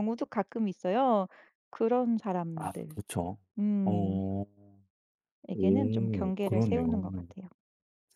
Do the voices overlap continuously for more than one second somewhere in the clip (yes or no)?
yes